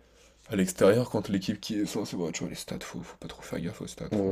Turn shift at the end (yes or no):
yes